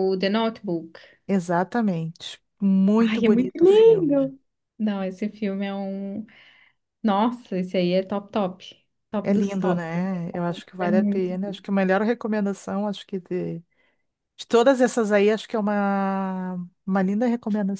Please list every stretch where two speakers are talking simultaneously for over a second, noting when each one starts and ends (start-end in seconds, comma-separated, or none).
3.0-4.3, 9.2-11.4